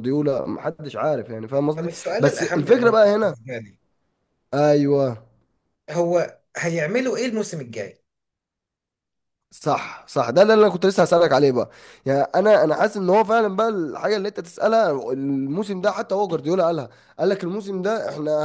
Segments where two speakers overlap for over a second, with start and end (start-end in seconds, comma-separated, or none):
1.8-3.4